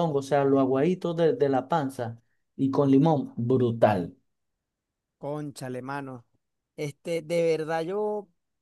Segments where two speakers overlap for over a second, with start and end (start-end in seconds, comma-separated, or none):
none